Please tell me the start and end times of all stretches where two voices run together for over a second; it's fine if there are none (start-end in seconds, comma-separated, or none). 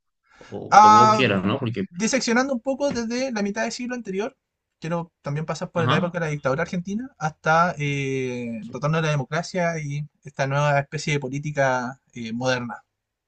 none